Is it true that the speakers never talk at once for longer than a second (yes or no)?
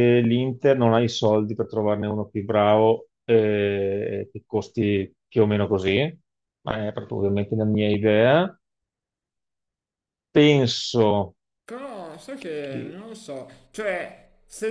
yes